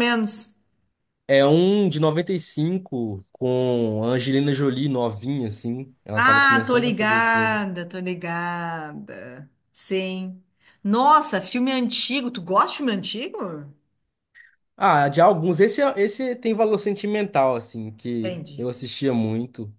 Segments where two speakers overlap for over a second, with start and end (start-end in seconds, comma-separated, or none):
6.1-7.6